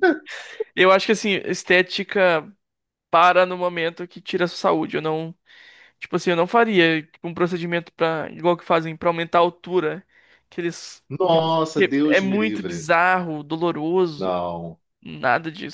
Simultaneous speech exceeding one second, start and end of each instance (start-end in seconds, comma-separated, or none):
11.1-12.9